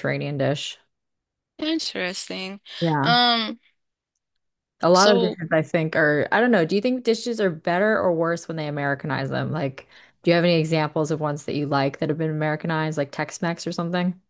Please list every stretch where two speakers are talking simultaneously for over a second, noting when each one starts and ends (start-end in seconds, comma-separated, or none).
none